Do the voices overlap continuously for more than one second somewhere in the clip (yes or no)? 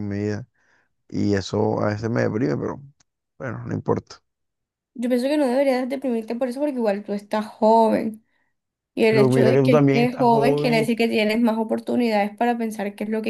yes